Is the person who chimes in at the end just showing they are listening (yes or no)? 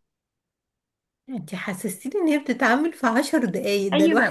no